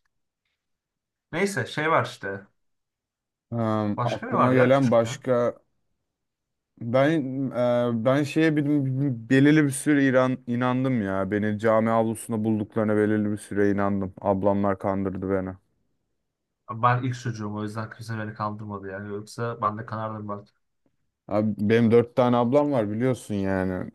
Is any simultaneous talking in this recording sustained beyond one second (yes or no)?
yes